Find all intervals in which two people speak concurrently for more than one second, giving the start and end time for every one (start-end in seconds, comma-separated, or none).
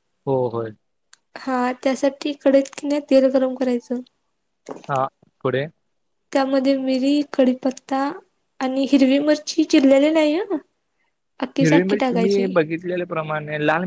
none